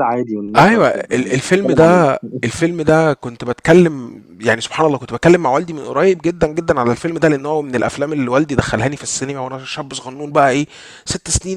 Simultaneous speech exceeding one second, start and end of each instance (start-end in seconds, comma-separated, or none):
0.6-2.0